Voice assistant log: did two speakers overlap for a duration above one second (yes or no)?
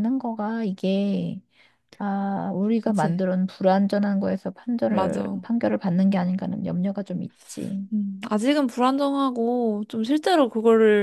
no